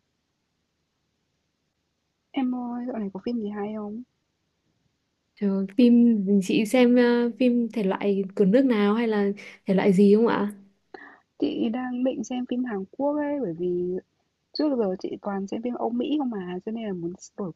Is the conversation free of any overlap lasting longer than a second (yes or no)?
yes